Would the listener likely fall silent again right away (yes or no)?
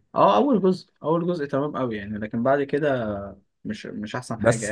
no